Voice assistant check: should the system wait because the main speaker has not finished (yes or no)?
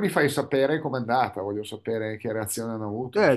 no